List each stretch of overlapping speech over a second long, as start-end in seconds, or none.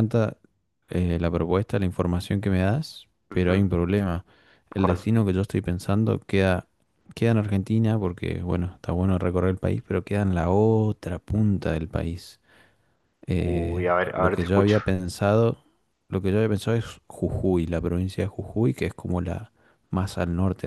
13.4-14.8